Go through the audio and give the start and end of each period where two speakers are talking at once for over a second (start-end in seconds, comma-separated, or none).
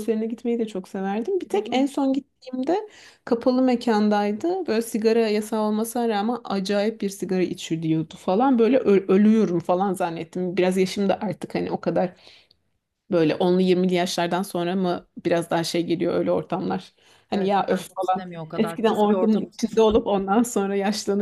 17.3-19.8